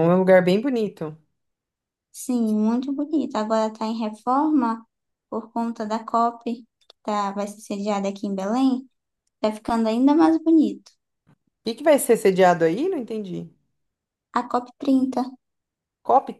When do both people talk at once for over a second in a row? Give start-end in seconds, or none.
none